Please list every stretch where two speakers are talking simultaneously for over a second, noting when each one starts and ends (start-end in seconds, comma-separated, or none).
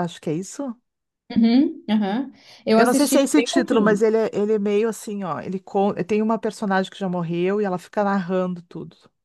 2.8-4.0